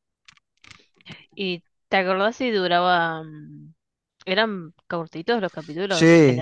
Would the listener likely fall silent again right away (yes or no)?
no